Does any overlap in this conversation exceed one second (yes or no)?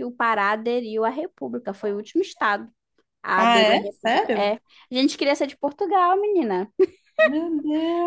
yes